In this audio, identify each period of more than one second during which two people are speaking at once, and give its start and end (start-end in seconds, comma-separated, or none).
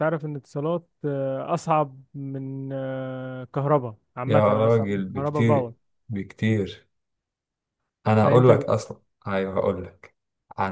4.3-5.7